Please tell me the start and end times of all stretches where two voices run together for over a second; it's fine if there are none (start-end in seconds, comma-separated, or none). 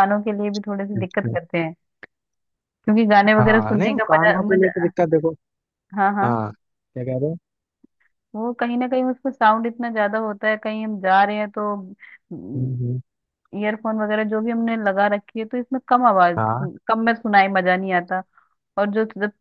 3.4-4.9